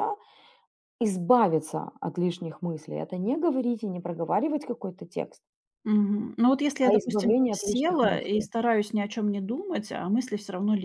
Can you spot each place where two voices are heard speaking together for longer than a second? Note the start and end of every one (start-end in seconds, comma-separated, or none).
6.8-8.5